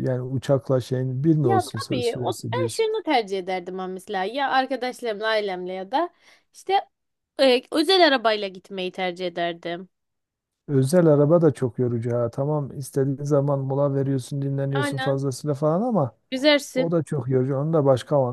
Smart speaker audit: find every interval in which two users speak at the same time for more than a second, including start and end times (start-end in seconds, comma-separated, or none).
1.4-2.9